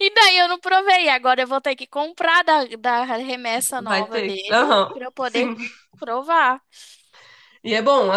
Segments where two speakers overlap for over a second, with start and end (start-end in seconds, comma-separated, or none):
3.8-5.5